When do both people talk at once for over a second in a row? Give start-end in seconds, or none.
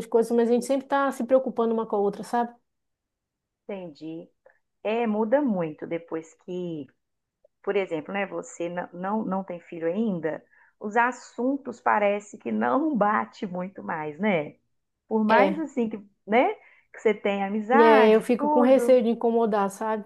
17.7-19.0